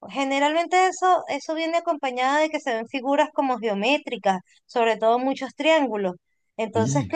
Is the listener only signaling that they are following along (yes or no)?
yes